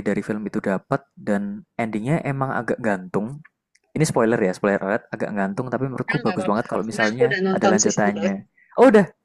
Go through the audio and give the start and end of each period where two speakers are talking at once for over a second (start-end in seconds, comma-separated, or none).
6.1-8.3